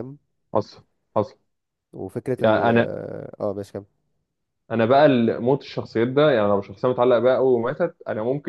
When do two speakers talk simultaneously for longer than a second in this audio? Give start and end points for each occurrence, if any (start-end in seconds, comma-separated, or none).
none